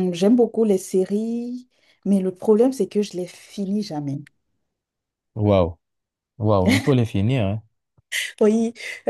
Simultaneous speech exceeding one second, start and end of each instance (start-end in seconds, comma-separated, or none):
none